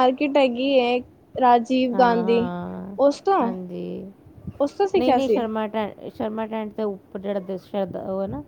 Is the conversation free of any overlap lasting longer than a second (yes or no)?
yes